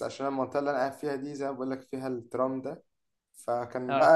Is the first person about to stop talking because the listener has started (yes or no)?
no